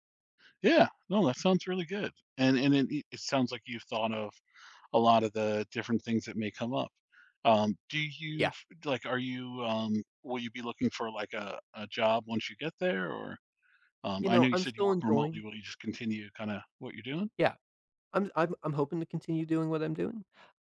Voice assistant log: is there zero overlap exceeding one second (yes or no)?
no